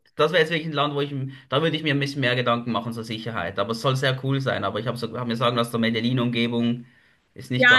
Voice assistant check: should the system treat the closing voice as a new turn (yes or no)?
yes